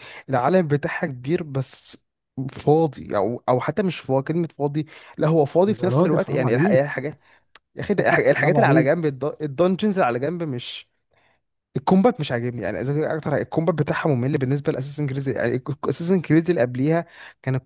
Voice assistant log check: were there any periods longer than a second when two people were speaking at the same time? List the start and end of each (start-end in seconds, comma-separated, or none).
5.7-7.0